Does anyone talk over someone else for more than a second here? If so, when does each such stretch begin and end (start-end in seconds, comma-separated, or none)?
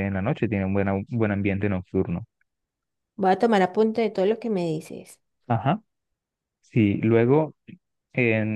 none